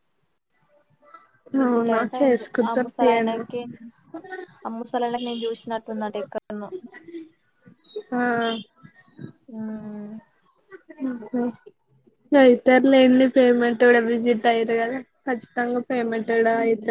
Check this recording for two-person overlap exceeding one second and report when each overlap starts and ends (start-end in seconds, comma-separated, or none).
1.7-3.4